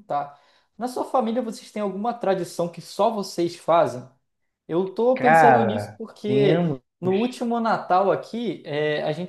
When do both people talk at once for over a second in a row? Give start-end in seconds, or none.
5.1-6.8